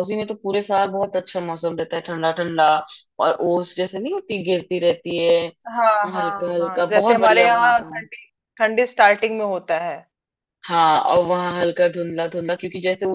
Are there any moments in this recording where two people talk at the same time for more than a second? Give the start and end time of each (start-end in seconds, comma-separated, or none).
6.2-7.8